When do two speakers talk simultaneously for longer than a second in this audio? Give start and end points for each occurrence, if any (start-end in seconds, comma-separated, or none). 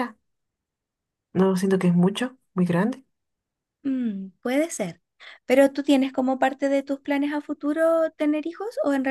none